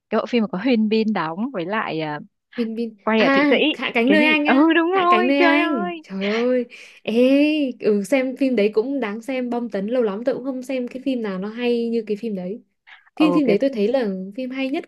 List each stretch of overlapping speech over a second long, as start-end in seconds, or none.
4.0-6.0